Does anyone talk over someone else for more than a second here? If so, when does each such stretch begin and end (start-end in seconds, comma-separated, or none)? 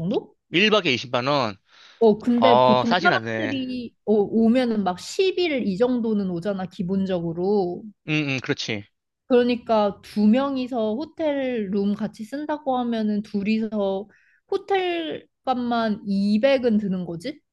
2.4-3.6